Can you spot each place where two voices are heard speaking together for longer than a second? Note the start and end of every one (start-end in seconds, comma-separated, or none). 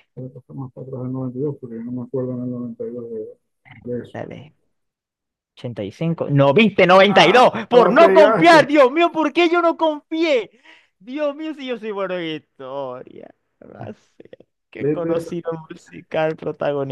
7.2-8.7